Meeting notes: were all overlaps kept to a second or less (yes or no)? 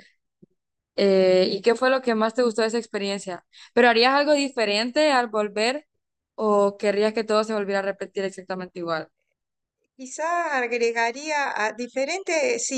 yes